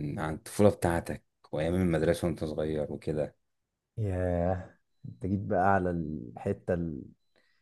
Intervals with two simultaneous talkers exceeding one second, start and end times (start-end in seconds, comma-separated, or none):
none